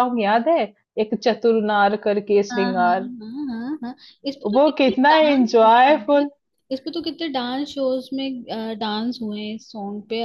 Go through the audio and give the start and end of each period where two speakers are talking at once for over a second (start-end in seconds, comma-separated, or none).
4.5-6.3